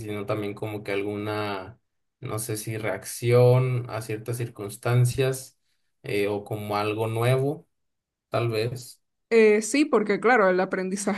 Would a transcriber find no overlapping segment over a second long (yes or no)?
yes